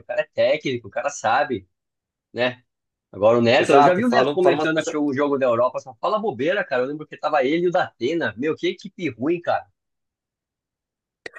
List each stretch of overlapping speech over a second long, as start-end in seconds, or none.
3.6-5.1